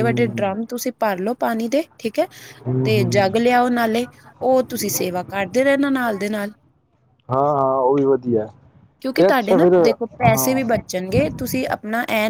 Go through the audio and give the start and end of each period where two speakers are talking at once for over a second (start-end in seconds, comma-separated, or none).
9.2-10.6